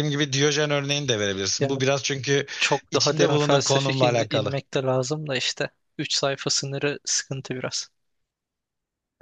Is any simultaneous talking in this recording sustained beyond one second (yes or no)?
yes